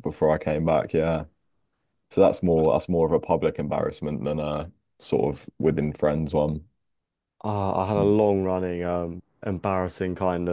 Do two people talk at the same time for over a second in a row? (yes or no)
no